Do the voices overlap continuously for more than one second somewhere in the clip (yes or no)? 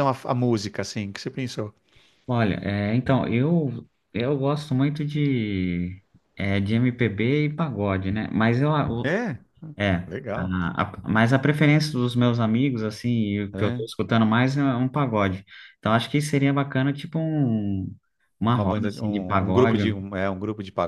yes